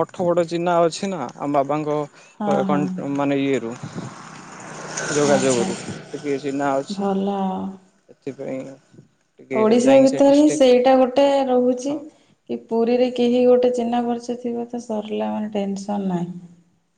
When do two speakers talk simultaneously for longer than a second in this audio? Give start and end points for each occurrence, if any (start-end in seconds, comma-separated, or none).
none